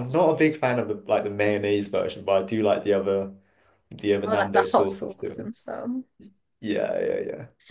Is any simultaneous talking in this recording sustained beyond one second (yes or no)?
yes